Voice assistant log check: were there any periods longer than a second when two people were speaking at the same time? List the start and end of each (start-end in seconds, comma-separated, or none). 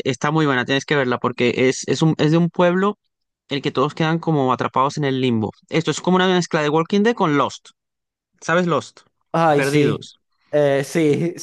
none